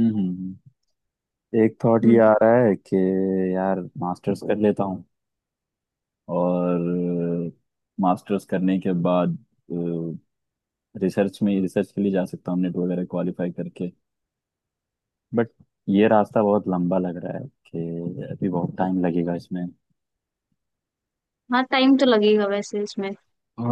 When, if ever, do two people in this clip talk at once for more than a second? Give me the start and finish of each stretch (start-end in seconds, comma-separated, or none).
none